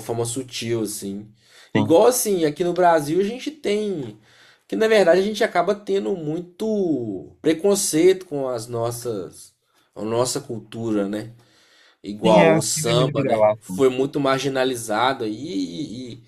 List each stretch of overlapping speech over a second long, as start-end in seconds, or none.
12.2-13.8